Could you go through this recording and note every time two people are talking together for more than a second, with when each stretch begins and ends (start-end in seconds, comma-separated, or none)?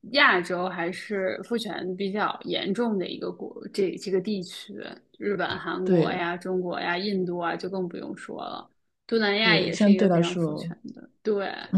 9.4-10.7